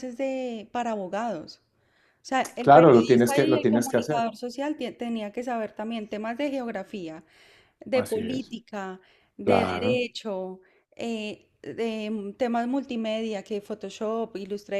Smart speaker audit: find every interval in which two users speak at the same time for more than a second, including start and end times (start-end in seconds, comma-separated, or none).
2.6-4.3